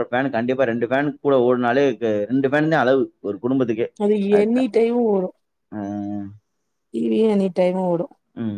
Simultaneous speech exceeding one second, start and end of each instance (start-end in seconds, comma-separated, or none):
none